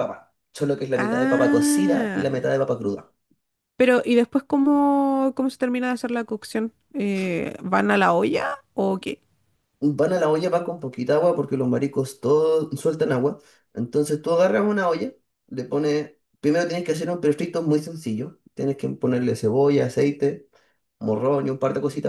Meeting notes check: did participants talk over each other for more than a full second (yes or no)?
yes